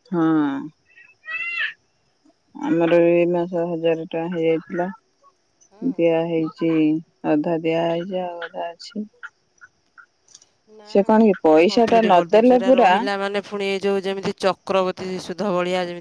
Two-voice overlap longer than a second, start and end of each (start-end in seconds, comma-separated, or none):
10.9-12.9